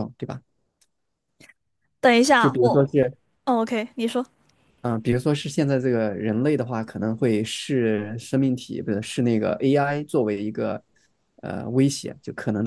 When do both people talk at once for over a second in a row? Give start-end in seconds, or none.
none